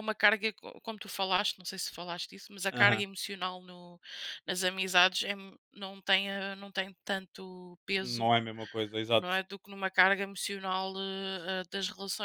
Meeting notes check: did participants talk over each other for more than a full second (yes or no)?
no